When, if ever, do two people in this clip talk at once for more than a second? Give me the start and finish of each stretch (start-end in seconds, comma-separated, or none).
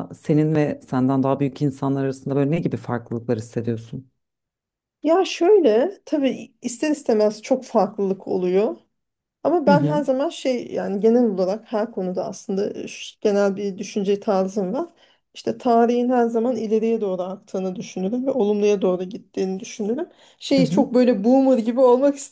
none